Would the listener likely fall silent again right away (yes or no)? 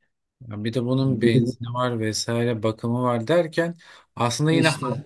yes